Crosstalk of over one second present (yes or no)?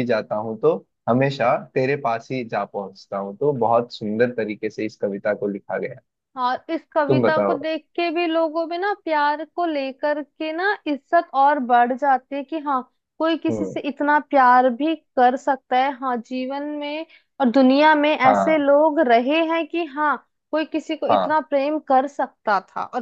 no